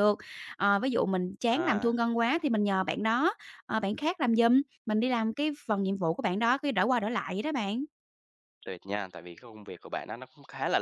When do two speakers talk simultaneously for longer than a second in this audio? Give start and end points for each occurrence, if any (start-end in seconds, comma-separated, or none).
none